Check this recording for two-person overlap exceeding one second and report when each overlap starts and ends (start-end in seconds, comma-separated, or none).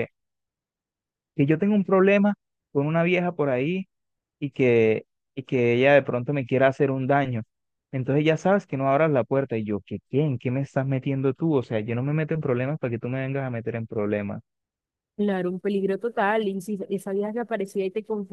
none